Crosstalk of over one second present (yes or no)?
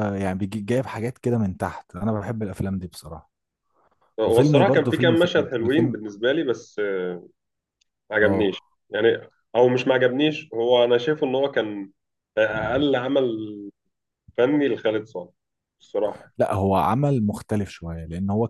yes